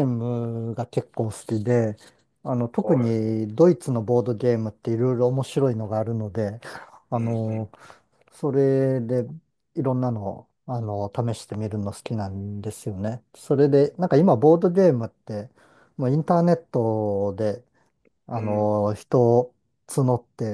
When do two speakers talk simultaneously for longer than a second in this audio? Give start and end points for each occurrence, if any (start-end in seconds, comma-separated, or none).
none